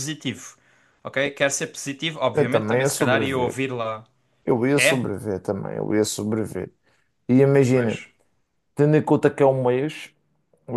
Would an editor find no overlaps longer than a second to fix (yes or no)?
no